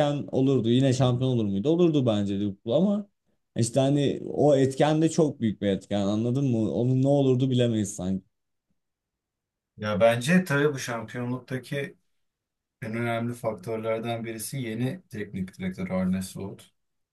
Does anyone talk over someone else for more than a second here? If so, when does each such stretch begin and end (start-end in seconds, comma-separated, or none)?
none